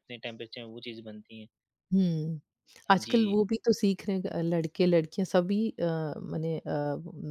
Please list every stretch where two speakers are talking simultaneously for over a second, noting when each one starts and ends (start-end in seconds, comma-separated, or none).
none